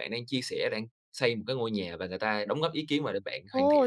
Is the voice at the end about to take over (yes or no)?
yes